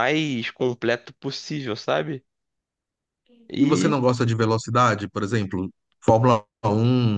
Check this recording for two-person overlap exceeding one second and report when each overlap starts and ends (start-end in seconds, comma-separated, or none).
none